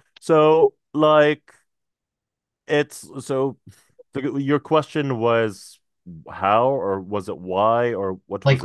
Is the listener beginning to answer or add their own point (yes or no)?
yes